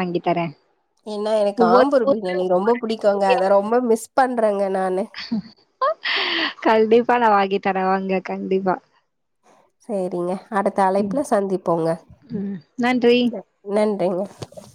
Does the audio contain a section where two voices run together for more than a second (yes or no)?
yes